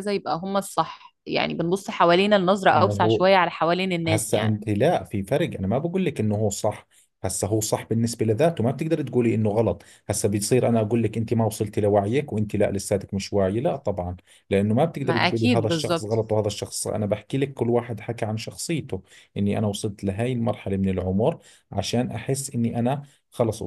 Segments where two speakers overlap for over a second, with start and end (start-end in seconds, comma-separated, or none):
15.0-16.2